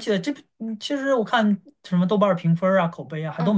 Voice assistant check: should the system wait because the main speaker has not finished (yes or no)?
no